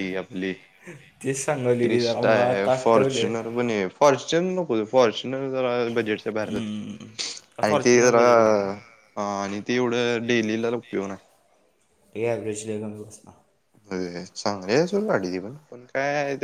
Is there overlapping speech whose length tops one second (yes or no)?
yes